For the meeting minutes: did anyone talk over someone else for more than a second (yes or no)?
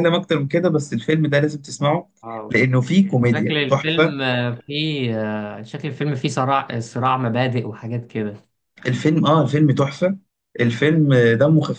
yes